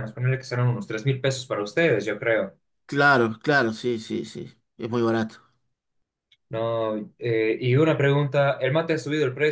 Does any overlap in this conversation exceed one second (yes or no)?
no